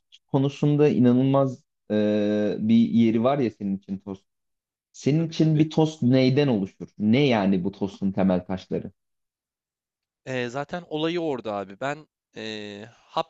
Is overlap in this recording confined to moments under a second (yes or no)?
yes